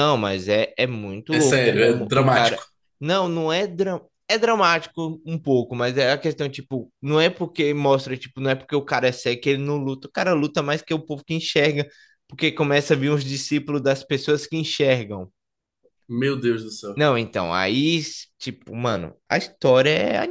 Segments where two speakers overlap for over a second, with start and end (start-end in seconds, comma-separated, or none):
1.3-2.6